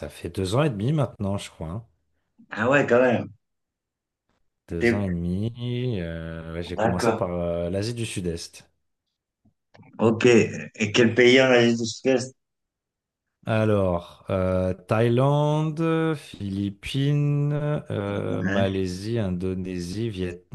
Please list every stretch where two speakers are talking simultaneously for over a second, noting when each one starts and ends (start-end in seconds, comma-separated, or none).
none